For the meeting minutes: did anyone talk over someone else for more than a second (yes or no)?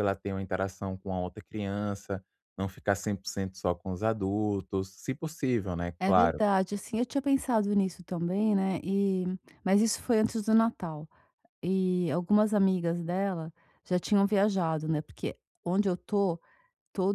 no